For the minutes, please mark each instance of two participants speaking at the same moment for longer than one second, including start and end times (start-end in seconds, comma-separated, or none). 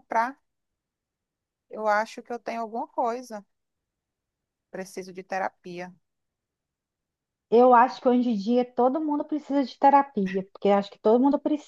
none